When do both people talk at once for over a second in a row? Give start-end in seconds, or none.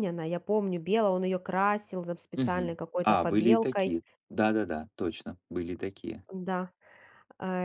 2.3-3.9